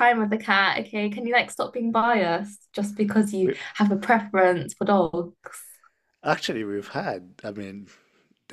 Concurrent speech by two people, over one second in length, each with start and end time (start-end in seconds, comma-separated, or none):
none